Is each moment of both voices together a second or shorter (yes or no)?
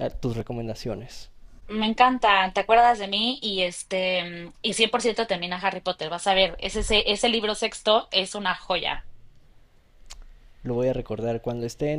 yes